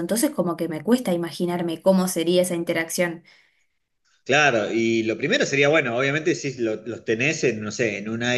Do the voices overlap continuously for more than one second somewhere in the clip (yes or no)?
no